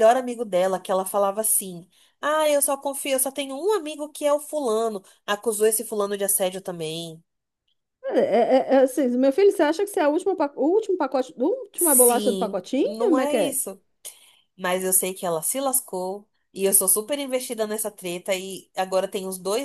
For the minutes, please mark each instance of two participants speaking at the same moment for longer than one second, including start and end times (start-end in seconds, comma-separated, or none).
11.7-13.6